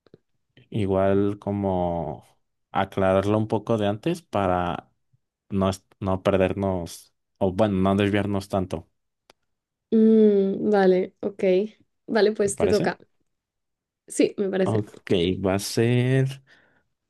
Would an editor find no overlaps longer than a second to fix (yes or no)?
yes